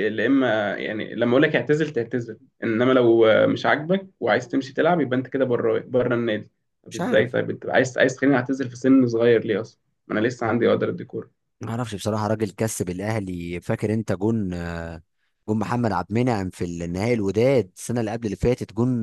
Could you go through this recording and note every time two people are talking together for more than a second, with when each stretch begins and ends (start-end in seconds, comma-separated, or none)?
none